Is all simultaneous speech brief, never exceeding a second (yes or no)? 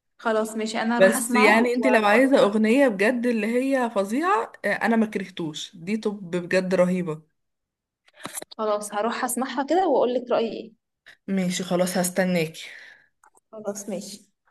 no